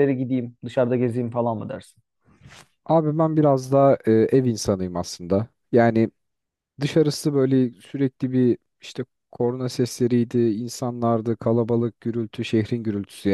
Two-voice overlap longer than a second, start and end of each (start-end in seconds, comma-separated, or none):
none